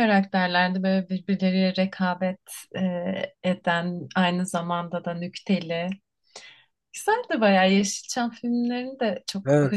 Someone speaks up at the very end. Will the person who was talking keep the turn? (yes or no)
no